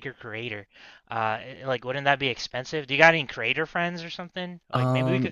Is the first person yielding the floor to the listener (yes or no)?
no